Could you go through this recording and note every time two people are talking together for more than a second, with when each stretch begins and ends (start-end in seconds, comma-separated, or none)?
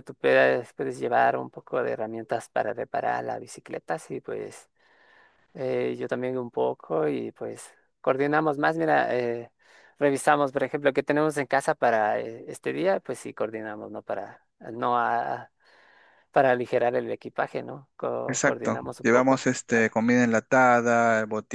18.3-19.9